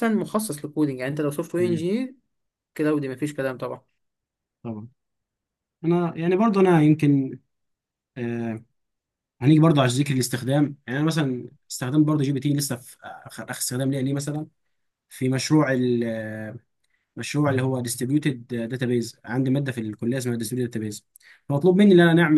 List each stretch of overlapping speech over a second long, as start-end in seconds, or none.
none